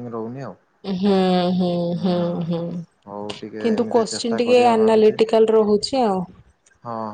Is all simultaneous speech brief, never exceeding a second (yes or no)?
no